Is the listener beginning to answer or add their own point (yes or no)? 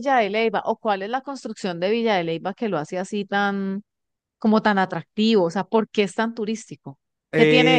yes